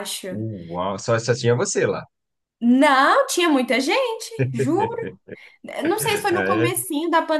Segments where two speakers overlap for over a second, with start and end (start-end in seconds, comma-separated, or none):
none